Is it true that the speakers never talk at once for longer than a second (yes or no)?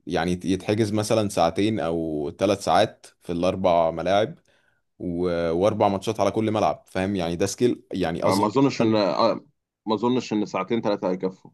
yes